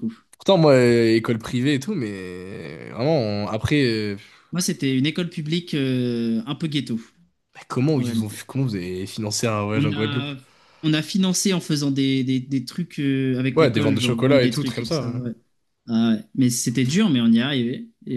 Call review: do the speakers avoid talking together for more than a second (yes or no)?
no